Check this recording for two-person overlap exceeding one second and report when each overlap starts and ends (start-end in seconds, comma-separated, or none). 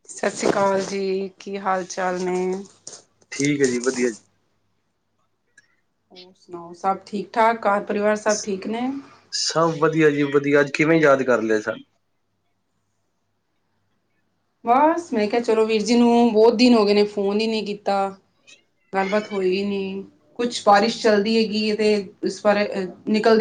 none